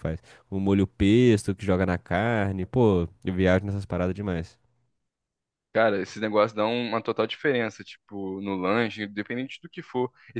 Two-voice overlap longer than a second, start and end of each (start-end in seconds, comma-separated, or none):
none